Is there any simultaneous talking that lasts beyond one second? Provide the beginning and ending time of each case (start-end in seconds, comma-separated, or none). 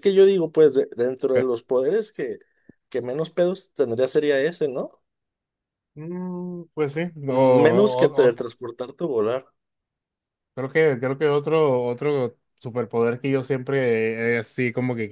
none